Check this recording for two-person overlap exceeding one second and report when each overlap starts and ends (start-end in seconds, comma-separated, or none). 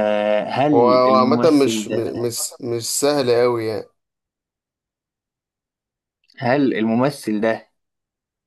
0.7-2.3